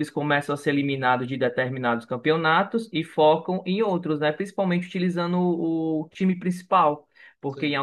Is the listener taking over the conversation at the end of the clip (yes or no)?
no